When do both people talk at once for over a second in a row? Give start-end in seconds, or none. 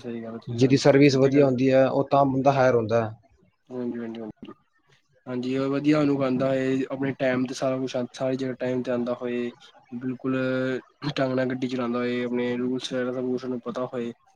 none